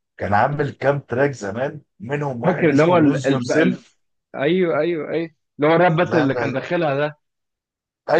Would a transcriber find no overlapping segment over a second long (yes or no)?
no